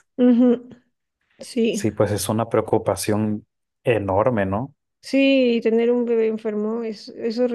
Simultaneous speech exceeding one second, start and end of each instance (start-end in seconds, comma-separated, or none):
none